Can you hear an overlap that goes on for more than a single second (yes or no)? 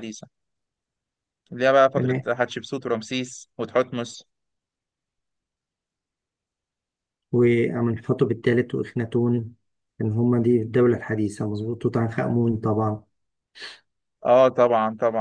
no